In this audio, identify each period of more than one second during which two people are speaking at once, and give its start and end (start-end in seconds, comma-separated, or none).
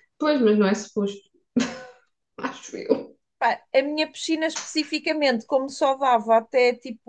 none